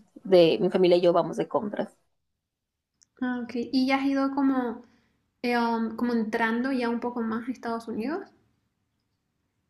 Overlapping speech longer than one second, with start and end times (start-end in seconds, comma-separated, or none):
none